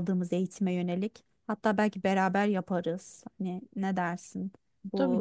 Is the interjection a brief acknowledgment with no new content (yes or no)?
no